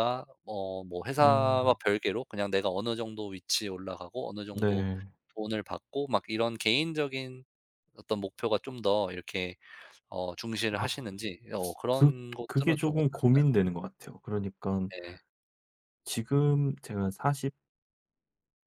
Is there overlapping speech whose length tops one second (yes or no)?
yes